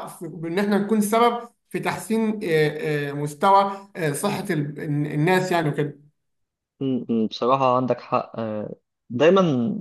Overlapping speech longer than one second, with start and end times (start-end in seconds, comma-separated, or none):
none